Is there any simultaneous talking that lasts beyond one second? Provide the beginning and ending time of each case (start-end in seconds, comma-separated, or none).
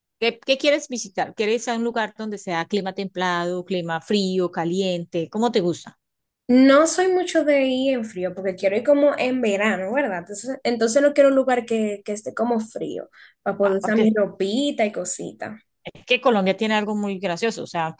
none